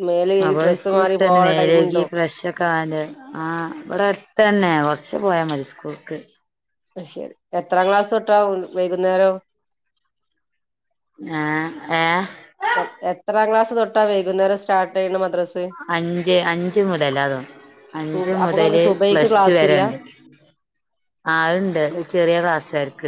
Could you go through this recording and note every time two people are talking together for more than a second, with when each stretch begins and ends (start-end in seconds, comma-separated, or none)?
18.1-19.8